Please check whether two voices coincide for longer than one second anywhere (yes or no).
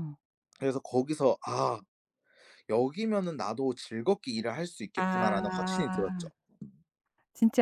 yes